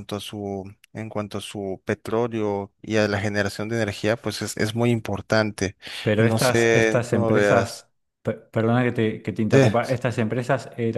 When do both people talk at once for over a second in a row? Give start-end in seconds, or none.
6.2-7.9